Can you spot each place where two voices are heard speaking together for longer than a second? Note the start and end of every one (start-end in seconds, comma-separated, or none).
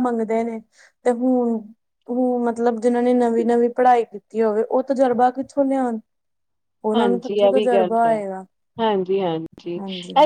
none